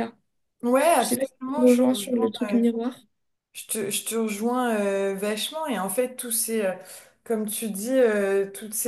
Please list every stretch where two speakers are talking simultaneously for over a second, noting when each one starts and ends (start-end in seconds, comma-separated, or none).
1.0-2.3